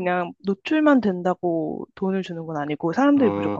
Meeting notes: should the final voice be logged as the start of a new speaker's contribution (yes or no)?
yes